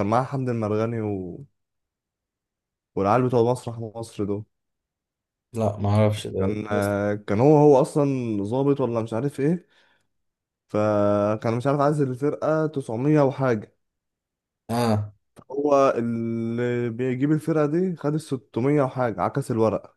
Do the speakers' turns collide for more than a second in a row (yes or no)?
no